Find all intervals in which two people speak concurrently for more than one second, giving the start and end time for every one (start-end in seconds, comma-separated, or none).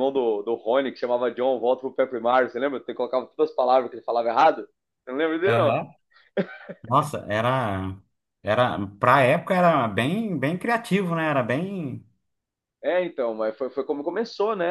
none